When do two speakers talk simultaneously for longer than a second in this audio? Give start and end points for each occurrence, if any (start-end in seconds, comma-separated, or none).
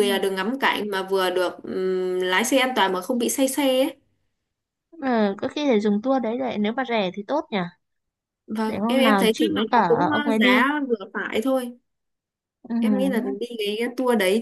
8.7-10.6